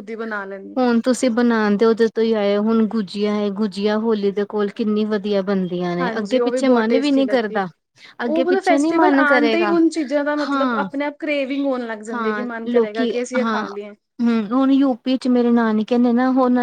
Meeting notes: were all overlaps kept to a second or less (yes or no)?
no